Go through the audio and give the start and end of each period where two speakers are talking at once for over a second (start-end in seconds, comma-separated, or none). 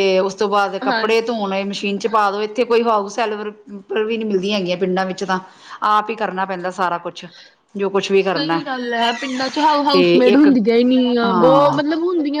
none